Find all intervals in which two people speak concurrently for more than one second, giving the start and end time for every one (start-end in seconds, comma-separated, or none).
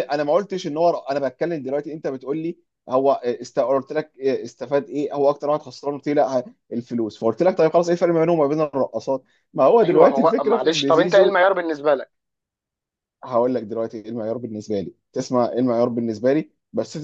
9.8-11.4